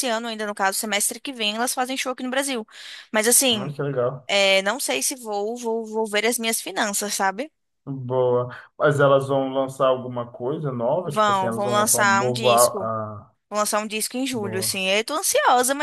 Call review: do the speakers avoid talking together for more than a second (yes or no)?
no